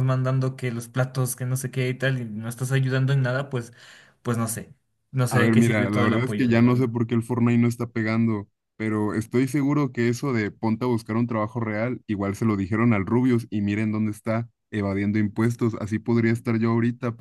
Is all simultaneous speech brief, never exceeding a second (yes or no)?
no